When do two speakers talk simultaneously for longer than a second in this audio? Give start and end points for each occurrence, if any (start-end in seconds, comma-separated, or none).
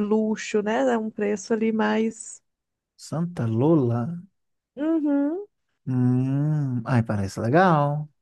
none